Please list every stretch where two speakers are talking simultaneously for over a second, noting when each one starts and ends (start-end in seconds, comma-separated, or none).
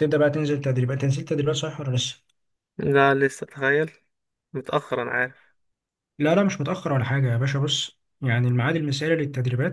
none